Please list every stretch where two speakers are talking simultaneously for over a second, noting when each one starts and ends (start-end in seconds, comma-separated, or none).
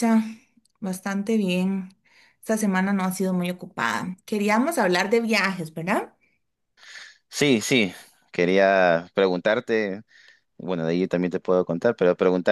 none